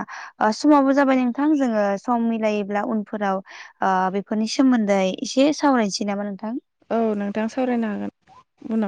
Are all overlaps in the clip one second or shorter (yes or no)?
yes